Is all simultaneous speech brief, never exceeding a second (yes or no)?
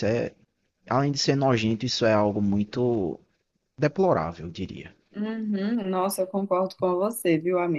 yes